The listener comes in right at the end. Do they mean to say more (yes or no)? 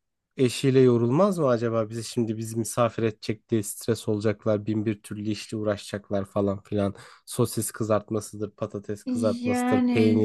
no